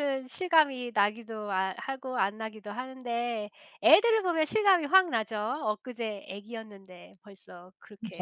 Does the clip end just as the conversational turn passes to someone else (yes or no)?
yes